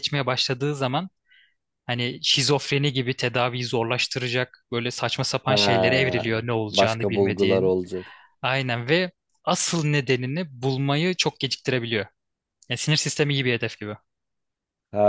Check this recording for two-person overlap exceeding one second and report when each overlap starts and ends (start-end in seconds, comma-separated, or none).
5.5-7.7